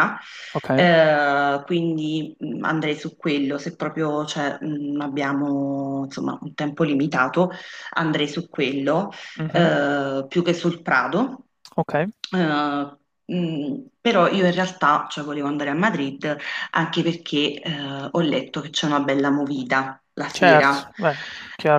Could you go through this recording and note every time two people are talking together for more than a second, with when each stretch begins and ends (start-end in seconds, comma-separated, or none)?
none